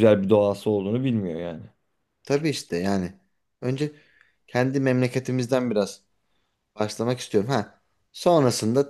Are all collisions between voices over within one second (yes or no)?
yes